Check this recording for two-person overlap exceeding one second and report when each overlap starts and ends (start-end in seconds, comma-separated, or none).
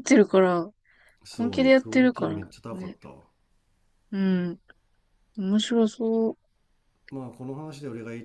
1.3-3.0